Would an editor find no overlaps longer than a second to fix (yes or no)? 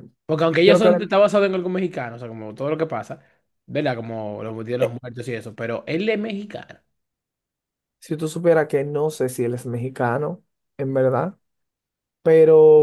yes